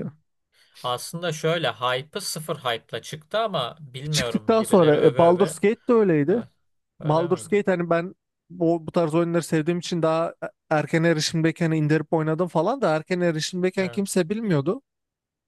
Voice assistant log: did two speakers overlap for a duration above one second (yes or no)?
yes